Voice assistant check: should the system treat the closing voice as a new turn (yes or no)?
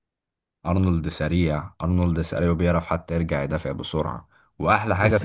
no